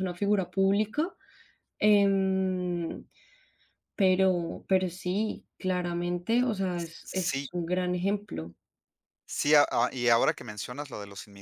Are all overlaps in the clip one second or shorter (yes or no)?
yes